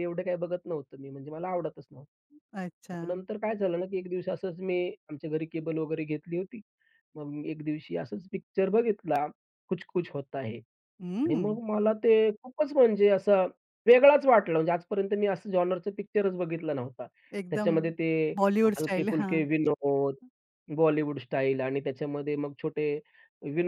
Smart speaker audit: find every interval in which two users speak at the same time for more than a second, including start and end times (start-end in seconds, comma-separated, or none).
none